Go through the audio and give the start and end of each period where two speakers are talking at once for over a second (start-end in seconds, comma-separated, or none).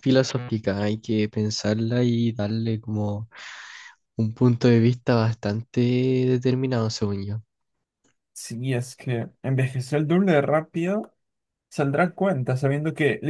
none